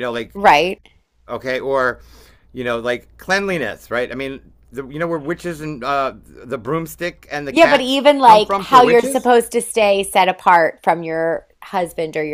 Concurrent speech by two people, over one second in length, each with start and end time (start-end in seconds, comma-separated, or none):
7.5-9.3